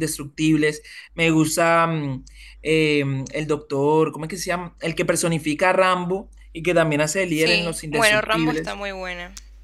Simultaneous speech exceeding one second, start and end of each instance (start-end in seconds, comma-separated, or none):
7.3-8.8